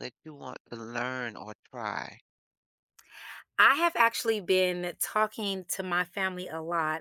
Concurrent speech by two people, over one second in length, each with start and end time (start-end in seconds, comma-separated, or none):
none